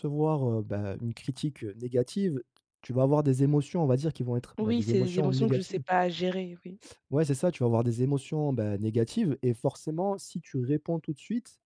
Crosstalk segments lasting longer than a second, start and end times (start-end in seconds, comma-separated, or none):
4.6-5.8